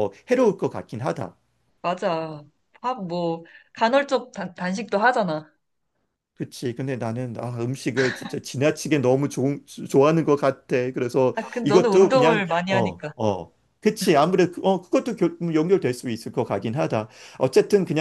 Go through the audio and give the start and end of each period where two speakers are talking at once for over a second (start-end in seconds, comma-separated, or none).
11.3-13.1